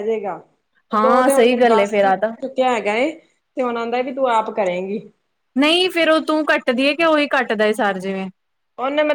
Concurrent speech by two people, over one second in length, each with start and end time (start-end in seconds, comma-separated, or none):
0.9-2.3